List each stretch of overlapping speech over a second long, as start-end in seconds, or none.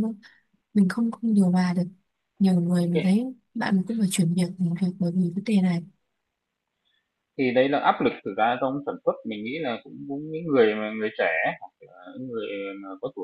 none